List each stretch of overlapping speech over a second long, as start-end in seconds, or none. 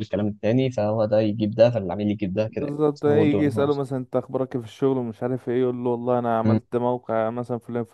2.4-3.8